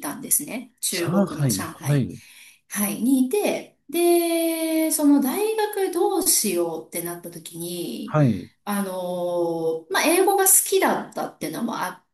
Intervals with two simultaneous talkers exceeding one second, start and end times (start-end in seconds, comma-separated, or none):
0.9-2.1